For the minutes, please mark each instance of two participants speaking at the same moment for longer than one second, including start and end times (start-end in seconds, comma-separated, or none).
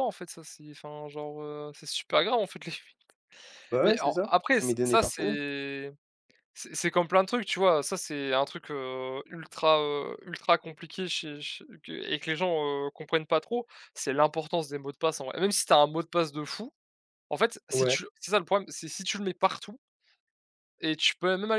3.8-5.4